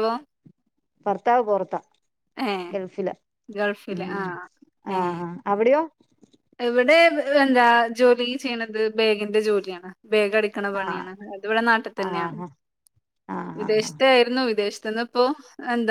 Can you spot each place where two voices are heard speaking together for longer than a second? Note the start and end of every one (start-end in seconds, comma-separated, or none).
none